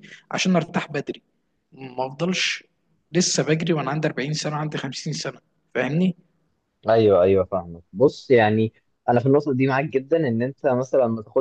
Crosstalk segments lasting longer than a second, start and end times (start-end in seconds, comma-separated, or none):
none